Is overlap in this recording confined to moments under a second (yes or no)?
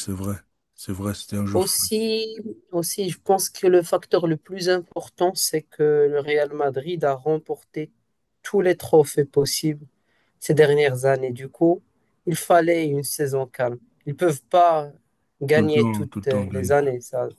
no